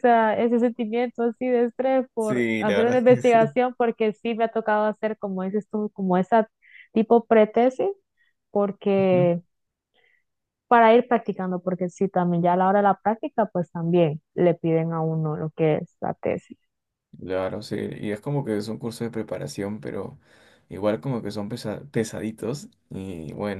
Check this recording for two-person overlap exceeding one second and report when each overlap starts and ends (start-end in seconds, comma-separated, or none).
2.2-3.5